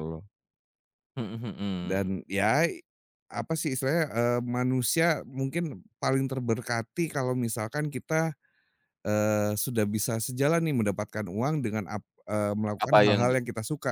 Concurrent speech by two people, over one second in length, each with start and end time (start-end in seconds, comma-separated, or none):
none